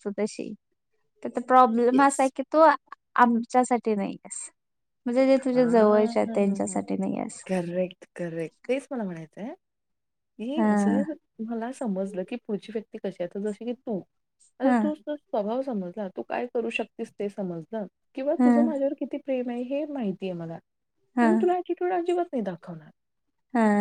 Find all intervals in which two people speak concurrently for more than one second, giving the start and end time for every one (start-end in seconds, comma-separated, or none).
5.5-6.8